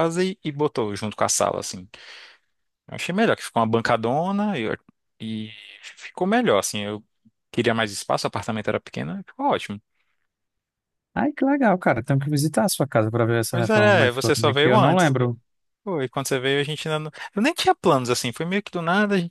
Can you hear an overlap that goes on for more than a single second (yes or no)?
yes